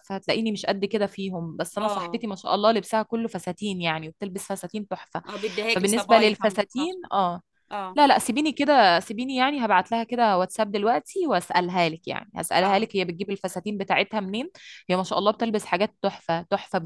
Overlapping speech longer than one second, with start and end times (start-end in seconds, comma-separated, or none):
5.8-7.0